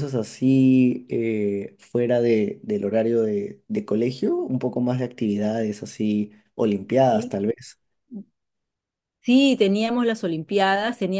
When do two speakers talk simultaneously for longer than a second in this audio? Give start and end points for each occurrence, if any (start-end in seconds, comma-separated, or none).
none